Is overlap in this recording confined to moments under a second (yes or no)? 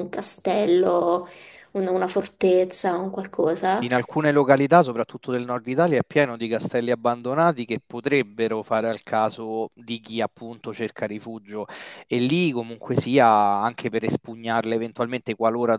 yes